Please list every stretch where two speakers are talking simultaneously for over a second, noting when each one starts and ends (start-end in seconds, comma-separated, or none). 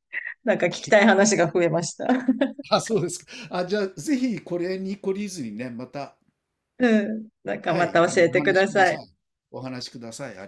7.7-9.0